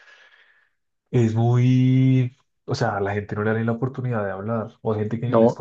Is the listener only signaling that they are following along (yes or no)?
no